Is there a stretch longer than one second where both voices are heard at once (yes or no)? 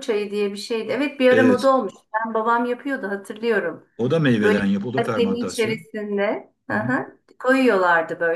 yes